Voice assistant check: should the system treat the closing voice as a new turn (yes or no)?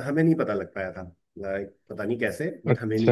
yes